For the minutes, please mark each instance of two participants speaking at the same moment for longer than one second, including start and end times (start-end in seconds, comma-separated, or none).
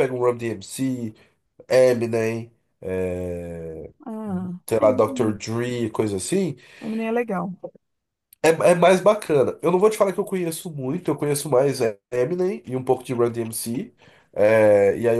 none